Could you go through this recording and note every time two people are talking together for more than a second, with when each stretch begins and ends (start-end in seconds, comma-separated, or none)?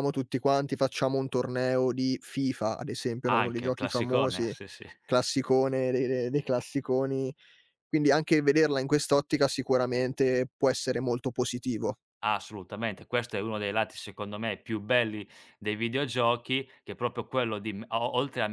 3.3-4.5